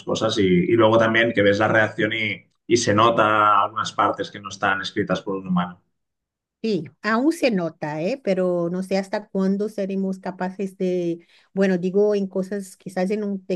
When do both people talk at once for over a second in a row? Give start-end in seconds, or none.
none